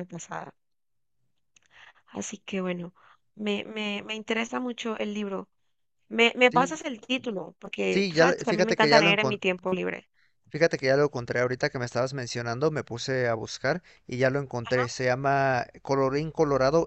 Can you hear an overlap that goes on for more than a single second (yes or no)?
yes